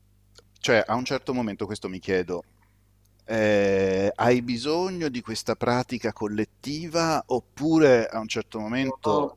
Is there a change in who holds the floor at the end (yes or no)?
no